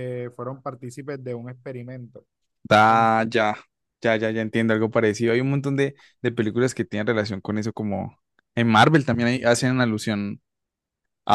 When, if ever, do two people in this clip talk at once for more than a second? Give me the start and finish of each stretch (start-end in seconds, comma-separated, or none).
none